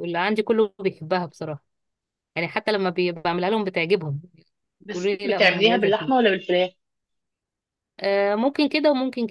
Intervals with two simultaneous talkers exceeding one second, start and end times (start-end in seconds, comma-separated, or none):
4.9-6.1